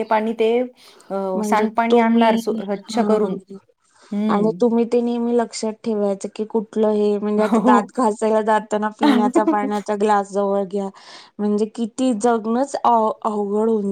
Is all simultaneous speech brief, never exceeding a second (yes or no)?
no